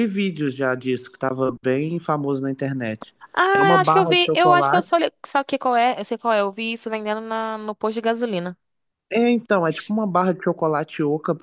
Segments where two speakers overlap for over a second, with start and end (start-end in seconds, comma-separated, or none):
3.5-4.9